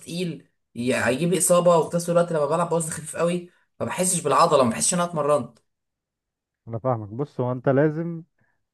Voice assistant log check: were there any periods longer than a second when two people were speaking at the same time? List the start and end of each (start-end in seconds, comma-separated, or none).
none